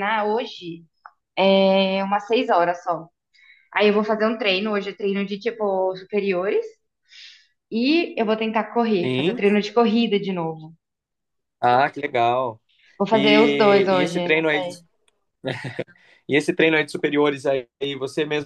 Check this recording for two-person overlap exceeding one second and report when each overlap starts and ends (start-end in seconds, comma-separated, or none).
13.1-14.8